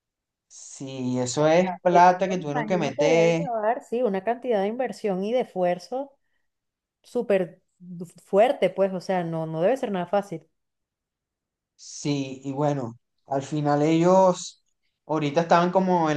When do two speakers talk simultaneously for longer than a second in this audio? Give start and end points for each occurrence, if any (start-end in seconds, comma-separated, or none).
1.9-3.4